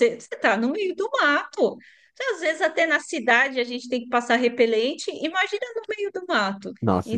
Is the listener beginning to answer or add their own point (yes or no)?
no